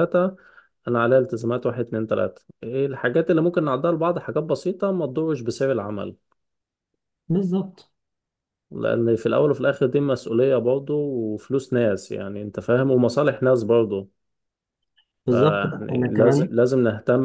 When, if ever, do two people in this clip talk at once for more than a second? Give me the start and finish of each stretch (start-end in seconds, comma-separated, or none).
15.3-16.6